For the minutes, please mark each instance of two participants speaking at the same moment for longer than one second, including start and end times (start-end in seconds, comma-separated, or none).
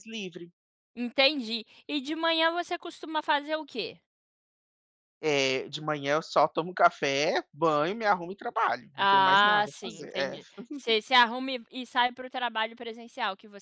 8.9-10.4